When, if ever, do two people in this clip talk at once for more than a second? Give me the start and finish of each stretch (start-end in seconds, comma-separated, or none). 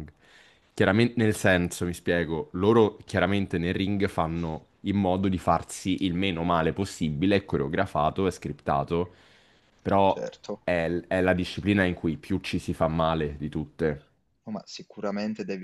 none